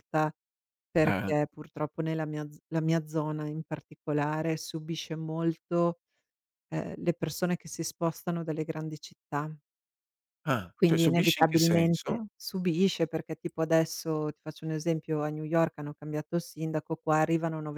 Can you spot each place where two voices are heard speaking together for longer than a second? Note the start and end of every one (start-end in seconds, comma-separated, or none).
10.7-12.3